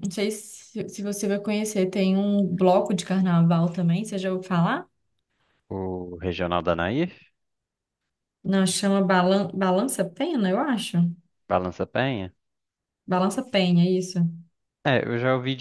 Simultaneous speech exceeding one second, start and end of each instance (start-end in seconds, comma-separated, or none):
none